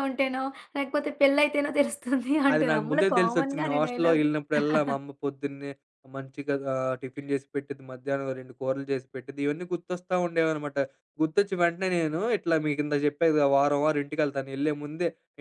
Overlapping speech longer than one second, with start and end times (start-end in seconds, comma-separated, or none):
2.5-4.3